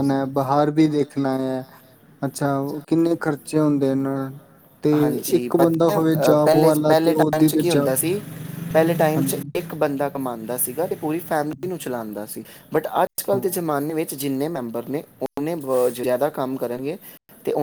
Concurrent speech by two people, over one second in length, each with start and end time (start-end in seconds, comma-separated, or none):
5.4-7.9